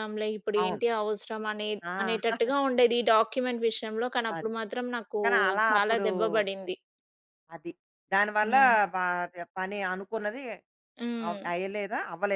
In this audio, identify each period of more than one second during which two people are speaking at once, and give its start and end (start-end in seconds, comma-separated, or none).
none